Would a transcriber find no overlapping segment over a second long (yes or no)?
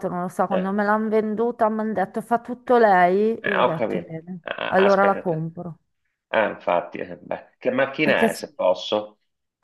no